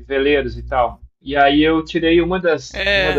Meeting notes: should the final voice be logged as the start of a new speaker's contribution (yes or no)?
no